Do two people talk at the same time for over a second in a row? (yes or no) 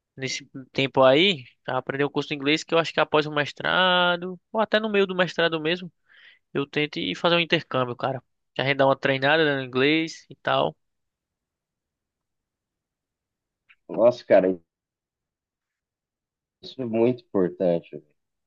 no